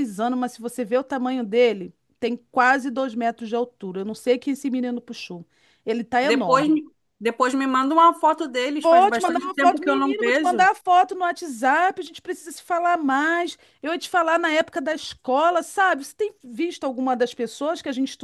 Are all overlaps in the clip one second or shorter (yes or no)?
no